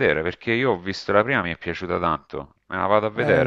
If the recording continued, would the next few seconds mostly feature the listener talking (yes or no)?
yes